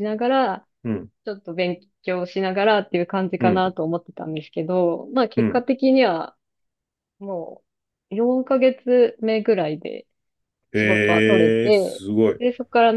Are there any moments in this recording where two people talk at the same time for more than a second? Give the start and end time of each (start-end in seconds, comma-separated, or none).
10.7-12.4